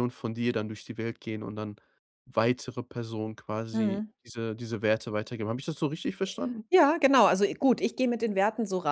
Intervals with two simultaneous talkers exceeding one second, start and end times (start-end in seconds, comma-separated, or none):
none